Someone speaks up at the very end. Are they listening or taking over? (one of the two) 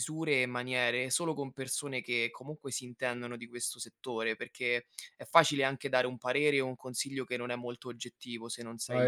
listening